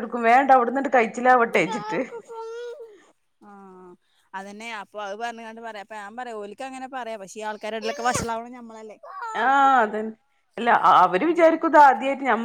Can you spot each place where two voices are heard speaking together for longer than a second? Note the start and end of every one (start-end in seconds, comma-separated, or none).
none